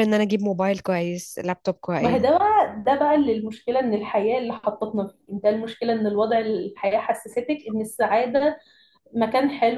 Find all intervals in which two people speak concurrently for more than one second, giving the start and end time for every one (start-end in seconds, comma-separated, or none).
none